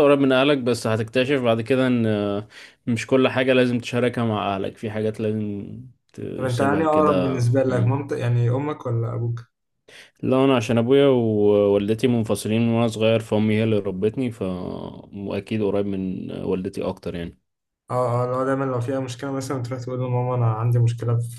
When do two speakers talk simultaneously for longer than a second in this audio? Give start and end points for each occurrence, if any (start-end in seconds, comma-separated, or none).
6.4-8.0